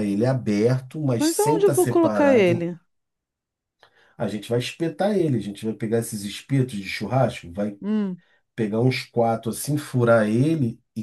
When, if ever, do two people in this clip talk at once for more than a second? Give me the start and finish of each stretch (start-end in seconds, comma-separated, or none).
1.2-2.7